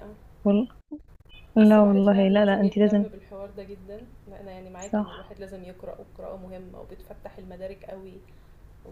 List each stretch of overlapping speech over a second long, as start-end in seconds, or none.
1.6-3.1